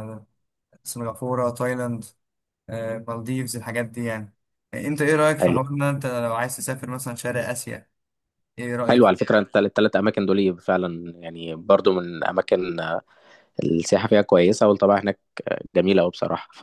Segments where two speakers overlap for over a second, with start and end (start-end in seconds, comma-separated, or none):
none